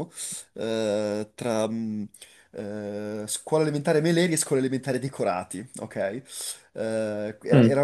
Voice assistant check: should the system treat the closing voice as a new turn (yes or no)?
no